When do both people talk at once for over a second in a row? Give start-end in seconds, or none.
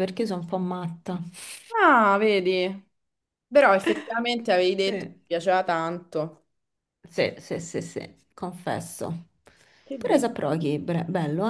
none